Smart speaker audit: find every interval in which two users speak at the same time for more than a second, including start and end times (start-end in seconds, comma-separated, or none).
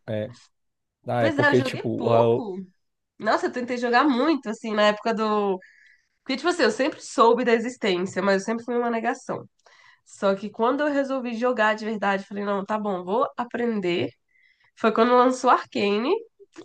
1.2-2.5